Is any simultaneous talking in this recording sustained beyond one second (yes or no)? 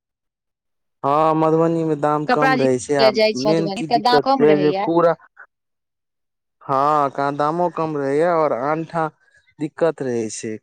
yes